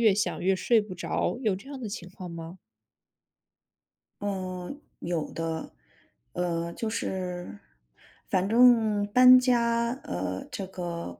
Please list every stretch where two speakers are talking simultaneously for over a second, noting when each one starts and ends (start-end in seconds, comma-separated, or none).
none